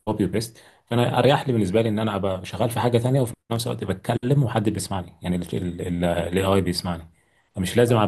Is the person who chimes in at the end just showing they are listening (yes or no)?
yes